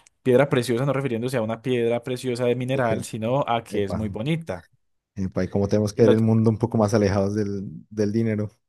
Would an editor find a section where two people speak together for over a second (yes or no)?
no